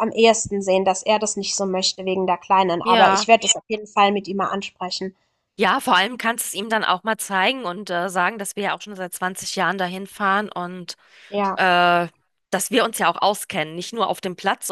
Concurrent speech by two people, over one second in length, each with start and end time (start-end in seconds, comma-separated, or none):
none